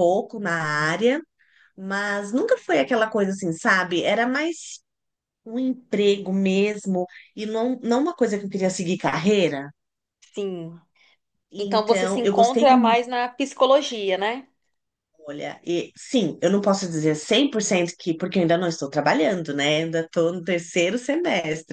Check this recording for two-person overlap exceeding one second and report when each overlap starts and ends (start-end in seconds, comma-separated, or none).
11.6-13.0